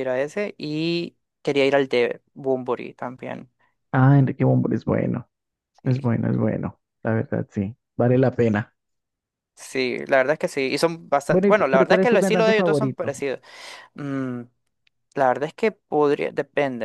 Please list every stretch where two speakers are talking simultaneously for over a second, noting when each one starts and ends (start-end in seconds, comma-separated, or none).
11.3-13.1